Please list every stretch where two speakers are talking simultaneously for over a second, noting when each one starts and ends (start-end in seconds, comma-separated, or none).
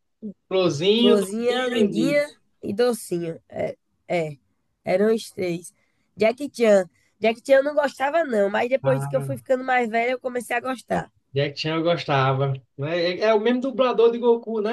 1.0-2.2